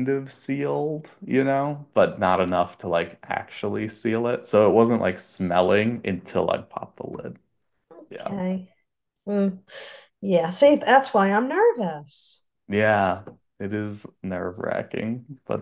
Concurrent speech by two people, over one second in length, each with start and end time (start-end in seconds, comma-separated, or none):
none